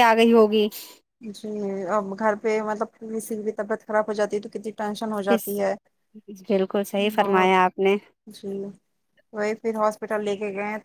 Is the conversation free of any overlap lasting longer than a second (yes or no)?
yes